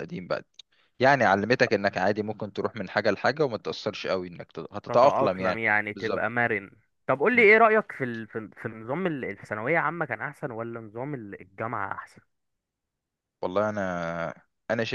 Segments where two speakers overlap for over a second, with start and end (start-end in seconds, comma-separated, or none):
4.9-6.3